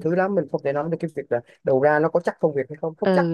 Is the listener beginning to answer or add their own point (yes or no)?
yes